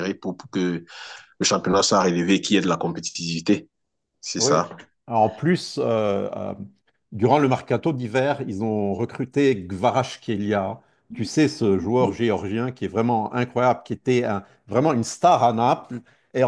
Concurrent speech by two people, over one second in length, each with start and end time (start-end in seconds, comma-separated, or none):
none